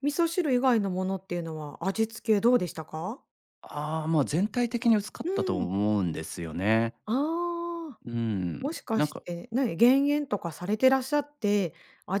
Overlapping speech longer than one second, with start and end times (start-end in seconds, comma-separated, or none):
none